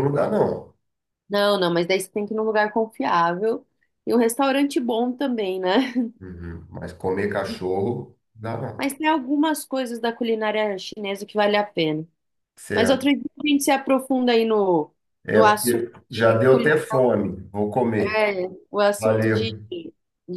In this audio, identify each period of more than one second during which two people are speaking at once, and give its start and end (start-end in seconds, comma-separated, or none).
15.3-16.8